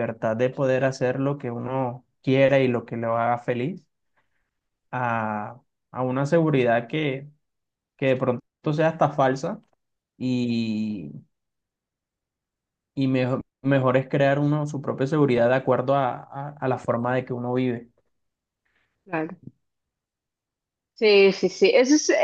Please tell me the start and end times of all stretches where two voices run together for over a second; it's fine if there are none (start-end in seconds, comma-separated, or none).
none